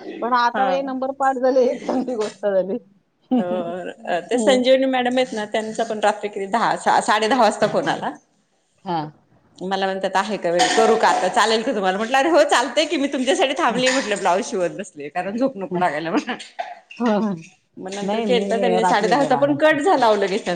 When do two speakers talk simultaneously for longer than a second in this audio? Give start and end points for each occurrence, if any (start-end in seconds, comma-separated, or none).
18.1-19.8